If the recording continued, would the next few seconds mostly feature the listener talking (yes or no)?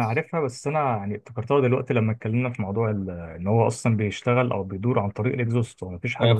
yes